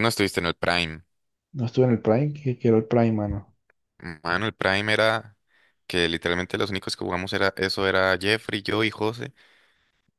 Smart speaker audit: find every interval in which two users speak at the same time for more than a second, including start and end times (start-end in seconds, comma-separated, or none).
none